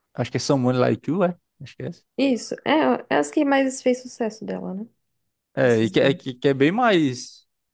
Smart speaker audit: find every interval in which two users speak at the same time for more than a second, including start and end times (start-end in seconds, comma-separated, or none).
none